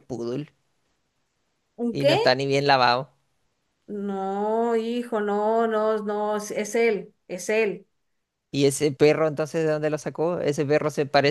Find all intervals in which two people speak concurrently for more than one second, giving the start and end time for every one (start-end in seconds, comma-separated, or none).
none